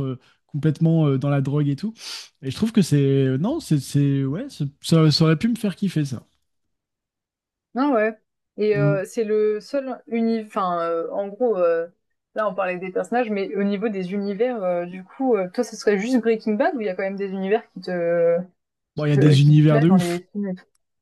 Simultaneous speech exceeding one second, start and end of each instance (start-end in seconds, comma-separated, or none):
19.0-20.2